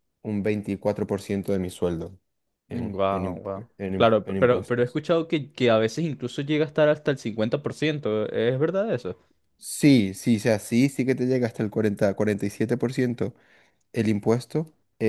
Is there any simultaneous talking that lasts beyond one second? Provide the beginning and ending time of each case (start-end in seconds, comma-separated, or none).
2.7-5.0